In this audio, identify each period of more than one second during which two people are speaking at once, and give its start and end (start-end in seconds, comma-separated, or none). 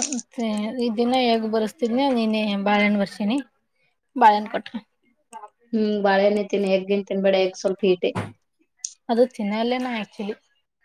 none